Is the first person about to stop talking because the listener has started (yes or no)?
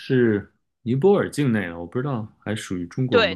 yes